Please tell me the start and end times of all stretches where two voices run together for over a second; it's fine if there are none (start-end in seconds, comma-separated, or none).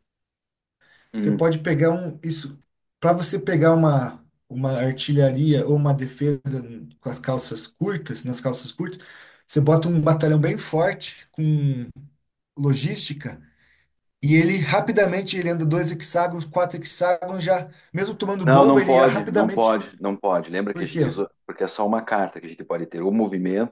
18.4-19.8